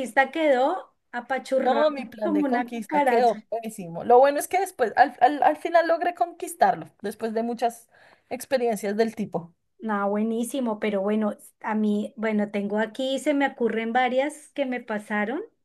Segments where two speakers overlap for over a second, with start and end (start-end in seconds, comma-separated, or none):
1.6-3.4